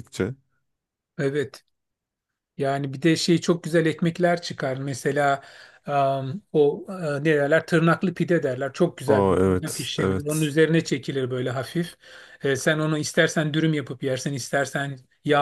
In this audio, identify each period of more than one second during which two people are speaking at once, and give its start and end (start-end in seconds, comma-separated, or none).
9.1-10.6